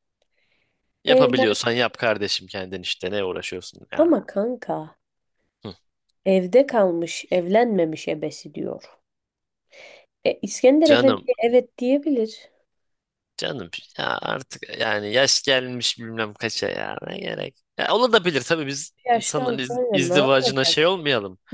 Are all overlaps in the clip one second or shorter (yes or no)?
no